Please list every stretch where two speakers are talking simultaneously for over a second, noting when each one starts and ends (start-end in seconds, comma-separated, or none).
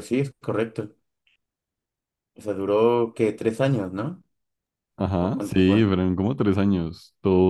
none